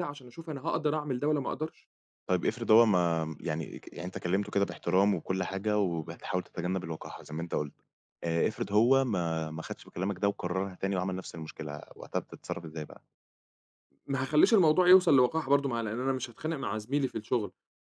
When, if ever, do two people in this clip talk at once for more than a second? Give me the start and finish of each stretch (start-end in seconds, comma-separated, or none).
none